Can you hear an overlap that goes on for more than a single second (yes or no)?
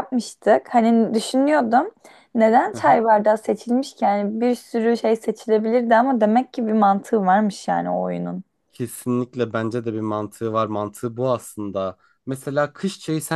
no